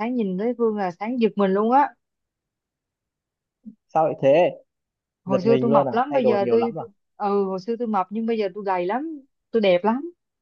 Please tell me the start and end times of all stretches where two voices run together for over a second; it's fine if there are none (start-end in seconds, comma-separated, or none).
5.2-6.8